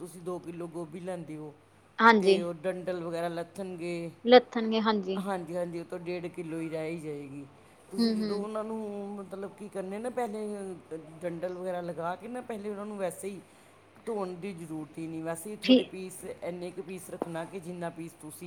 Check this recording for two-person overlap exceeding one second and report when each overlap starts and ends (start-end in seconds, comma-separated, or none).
none